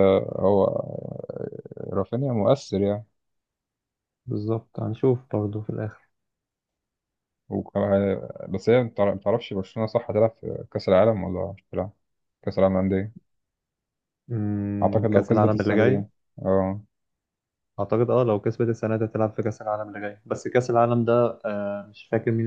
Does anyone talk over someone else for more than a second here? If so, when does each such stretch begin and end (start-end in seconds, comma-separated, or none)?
14.8-16.0